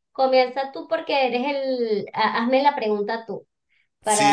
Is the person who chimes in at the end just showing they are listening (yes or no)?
no